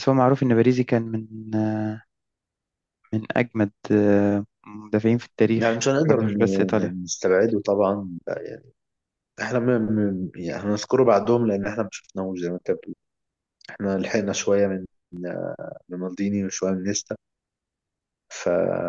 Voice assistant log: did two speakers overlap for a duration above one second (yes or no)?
yes